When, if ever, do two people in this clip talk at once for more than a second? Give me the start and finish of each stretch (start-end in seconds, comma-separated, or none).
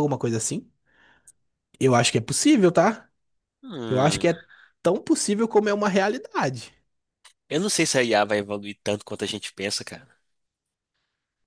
none